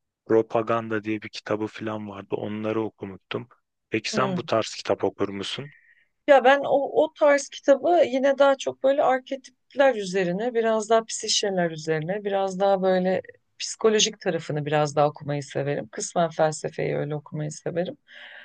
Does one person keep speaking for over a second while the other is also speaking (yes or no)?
no